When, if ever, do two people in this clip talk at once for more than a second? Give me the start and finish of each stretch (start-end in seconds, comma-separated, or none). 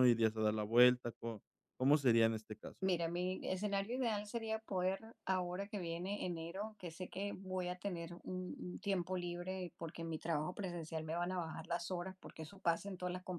none